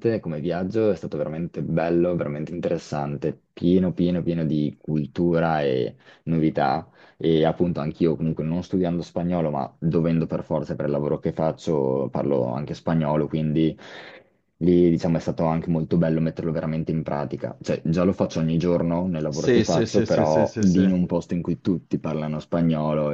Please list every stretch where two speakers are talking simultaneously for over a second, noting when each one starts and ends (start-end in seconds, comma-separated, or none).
19.3-20.9